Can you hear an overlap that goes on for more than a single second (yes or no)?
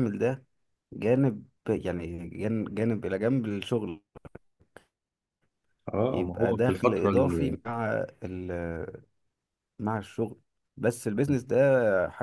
yes